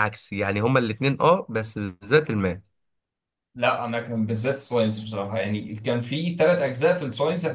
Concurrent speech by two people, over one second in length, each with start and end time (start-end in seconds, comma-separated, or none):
none